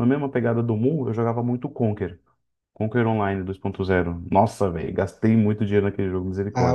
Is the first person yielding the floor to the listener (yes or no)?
yes